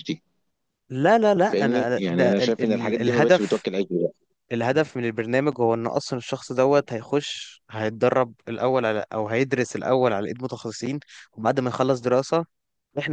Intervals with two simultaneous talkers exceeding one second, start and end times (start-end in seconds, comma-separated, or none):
1.4-3.6